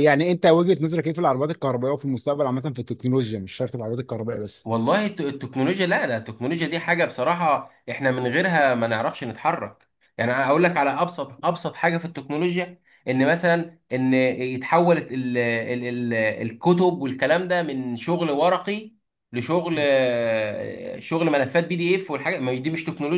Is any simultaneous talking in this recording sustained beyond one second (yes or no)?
no